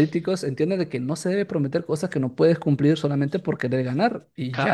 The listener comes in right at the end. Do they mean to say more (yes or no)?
no